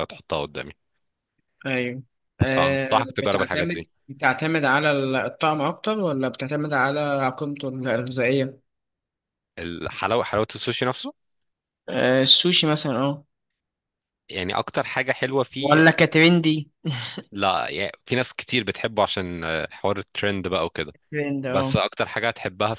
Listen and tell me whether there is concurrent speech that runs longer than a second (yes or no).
yes